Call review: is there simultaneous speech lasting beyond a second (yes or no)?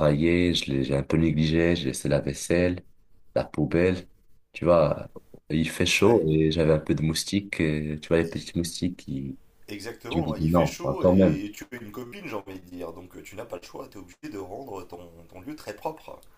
yes